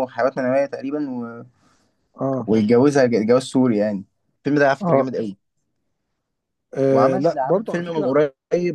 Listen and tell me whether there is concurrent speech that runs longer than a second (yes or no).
yes